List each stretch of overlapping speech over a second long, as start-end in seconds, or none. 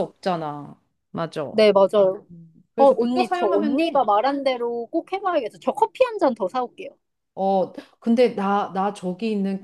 2.8-4.1